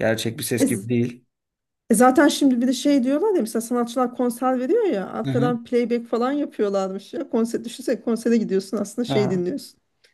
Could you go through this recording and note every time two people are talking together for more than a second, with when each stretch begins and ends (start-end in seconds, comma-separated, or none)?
none